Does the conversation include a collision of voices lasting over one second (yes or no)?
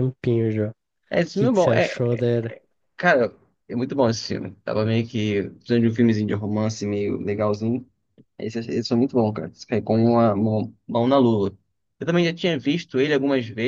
no